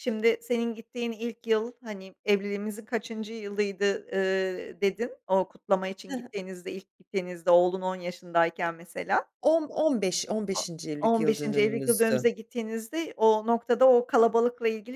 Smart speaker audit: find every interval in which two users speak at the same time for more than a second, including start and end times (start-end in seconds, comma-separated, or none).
11.0-12.3